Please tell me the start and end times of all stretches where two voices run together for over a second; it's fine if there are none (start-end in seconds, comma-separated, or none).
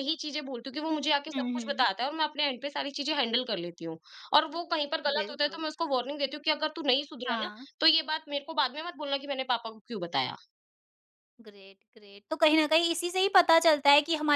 none